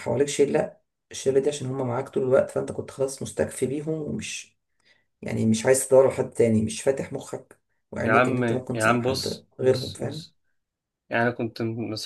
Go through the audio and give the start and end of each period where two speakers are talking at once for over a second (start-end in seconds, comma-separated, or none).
8.0-10.3